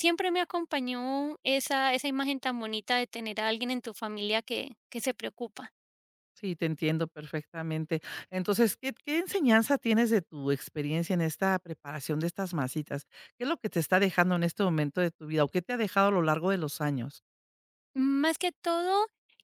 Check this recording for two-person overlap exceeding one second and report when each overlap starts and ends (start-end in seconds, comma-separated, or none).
none